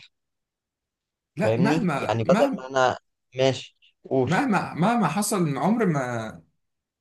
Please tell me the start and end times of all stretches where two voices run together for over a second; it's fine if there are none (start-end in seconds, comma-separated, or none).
1.4-2.6